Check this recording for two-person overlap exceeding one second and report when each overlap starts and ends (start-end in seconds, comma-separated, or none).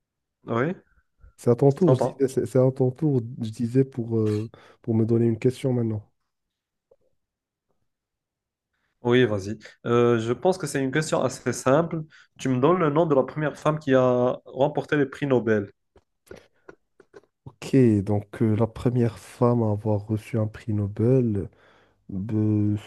none